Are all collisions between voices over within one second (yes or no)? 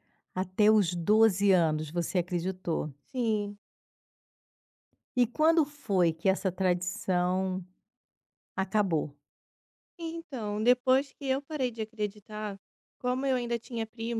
yes